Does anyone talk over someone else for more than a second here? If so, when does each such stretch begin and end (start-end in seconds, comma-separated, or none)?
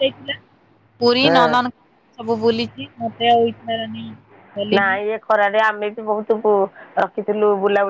none